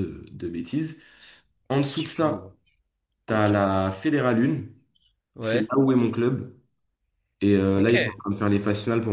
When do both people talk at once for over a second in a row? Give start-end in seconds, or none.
none